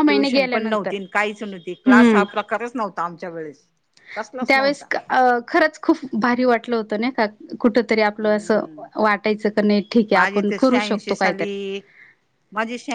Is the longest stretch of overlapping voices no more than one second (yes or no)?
no